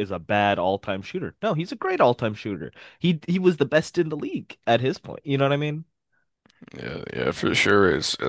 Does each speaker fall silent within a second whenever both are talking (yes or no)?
yes